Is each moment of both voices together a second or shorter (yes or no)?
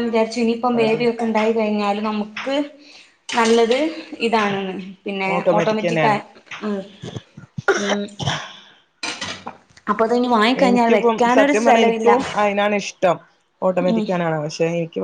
no